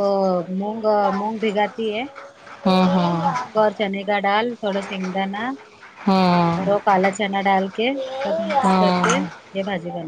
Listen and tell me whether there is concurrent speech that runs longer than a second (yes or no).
no